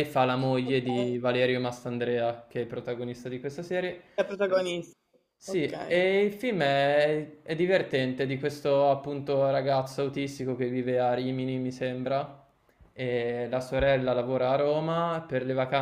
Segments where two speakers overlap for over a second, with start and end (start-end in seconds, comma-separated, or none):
none